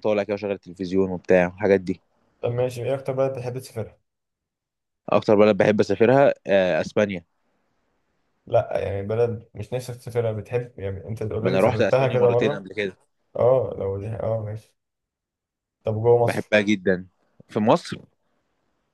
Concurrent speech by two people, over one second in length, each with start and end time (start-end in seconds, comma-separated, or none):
11.4-12.7